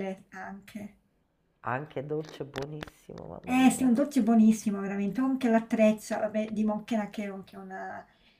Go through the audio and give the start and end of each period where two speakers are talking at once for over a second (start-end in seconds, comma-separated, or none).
none